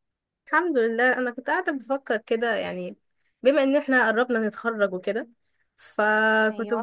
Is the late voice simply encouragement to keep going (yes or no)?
yes